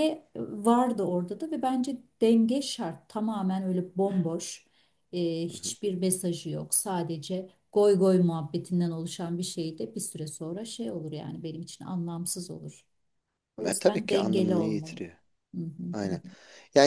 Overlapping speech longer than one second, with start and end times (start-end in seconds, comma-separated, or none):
13.7-15.0